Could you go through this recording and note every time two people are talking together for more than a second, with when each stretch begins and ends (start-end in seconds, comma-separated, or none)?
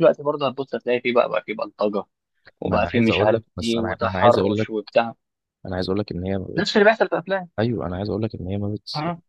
2.6-4.7